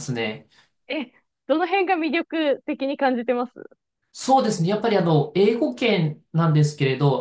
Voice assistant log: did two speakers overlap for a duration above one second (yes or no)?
no